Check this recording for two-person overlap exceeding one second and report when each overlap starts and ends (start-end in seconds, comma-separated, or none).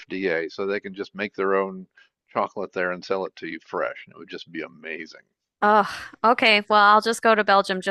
none